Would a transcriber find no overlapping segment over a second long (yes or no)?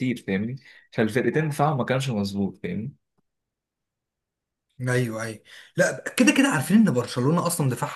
yes